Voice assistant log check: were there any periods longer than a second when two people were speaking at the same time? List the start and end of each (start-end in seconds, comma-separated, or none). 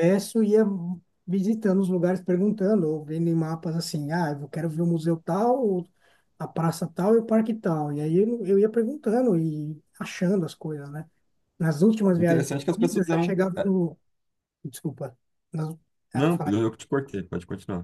12.2-13.4